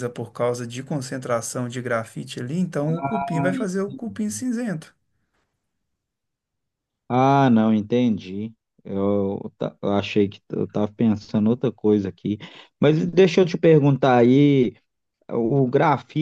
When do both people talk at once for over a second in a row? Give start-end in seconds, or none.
none